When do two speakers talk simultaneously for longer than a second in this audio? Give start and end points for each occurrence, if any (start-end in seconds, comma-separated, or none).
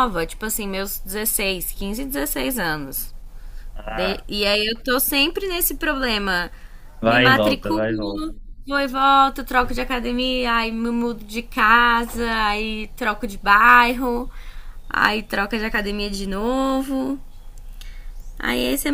7.1-8.3